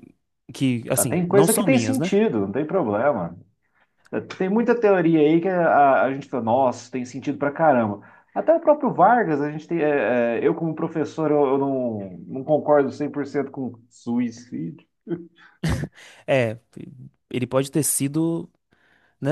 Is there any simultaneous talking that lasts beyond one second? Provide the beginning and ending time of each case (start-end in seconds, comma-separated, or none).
0.9-2.2